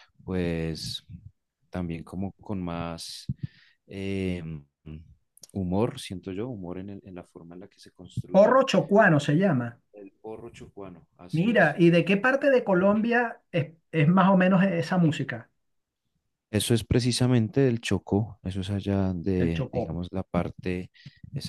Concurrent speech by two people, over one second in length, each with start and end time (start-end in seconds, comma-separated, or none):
none